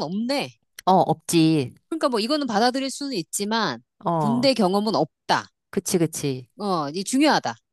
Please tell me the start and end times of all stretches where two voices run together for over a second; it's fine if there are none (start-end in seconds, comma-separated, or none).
none